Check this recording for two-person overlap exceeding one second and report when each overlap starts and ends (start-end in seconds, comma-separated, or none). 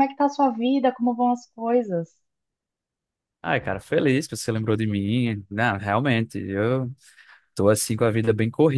none